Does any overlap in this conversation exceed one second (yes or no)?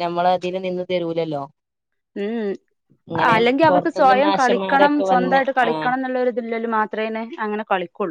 yes